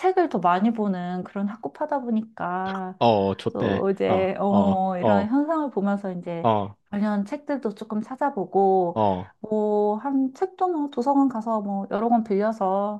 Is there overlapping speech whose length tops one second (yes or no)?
yes